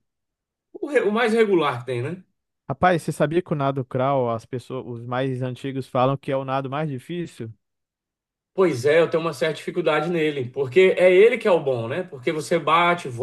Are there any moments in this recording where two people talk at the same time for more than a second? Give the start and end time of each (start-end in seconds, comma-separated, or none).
none